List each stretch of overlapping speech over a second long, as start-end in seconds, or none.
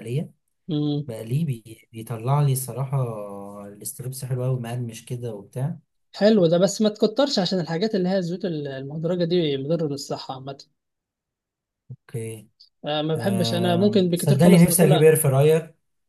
13.2-15.1